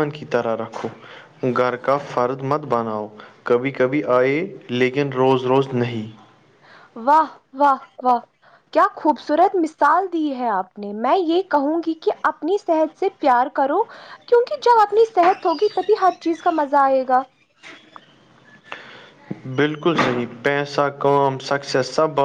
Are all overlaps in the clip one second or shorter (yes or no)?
yes